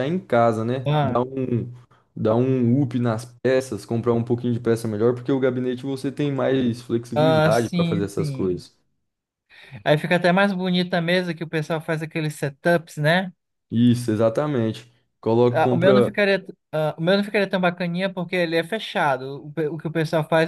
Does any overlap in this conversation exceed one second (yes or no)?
yes